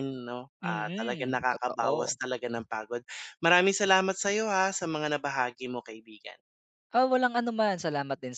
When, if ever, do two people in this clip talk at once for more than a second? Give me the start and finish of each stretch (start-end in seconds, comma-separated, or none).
0.6-2.2